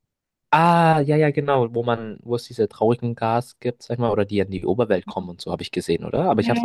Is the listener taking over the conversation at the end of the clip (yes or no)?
yes